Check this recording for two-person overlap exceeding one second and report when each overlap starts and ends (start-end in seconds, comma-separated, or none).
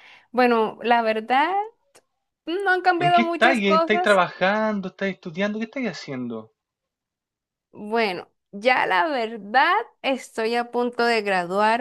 3.0-4.2